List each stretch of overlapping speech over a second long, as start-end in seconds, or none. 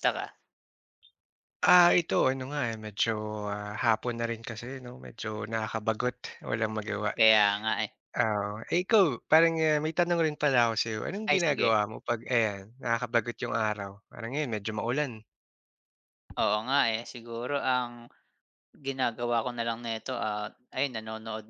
none